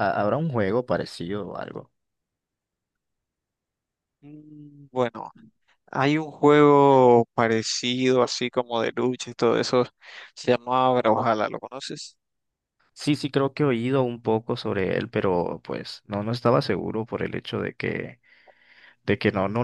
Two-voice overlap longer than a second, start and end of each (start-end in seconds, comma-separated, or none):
none